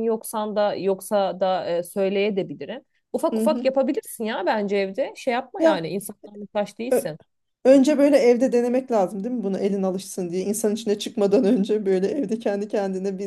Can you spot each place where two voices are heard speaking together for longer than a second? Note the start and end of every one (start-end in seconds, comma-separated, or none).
none